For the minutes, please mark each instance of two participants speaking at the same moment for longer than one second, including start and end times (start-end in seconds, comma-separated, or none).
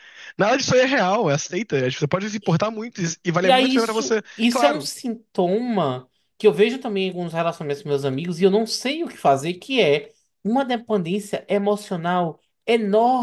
3.4-4.9